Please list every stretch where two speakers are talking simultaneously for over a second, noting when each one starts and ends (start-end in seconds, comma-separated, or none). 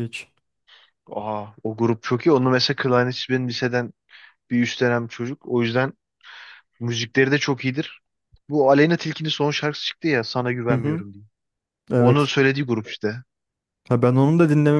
none